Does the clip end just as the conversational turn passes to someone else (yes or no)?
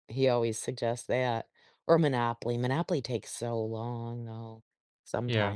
yes